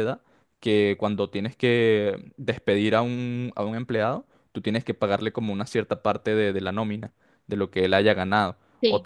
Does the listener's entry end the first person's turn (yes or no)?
no